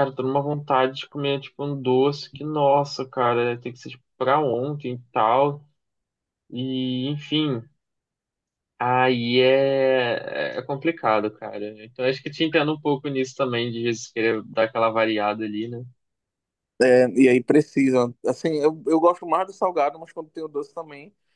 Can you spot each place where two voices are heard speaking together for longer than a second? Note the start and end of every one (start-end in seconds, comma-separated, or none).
none